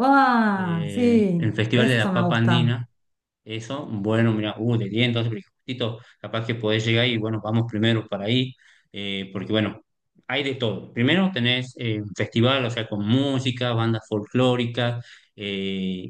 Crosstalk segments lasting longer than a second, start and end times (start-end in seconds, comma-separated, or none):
0.5-2.7